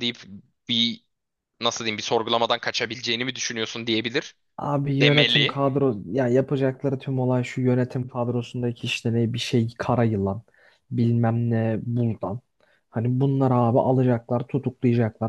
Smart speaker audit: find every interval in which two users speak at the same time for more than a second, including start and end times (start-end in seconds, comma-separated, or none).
none